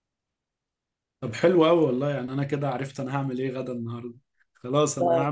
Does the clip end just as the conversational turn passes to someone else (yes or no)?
no